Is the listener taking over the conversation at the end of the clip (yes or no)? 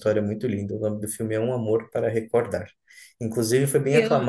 no